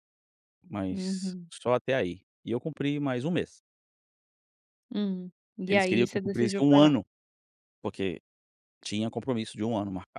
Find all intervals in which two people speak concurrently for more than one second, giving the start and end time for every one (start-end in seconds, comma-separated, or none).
5.7-6.9